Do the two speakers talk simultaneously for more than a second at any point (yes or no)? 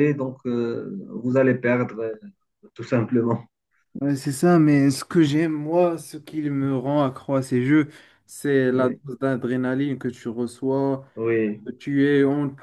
no